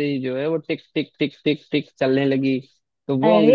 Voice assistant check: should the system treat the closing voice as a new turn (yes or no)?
no